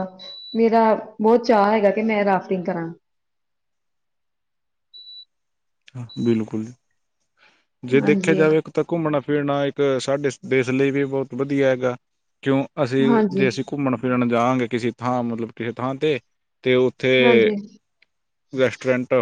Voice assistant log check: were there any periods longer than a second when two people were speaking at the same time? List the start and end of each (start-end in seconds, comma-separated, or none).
none